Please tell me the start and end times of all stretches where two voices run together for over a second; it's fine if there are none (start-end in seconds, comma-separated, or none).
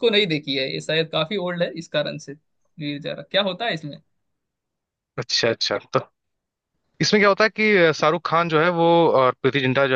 none